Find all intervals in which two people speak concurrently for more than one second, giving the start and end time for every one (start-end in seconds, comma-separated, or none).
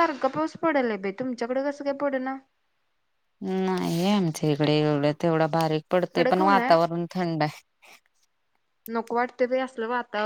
none